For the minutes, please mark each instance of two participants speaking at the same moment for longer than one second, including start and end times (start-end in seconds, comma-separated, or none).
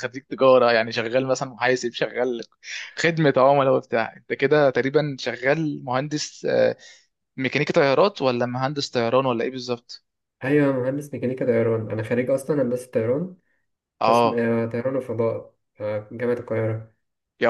none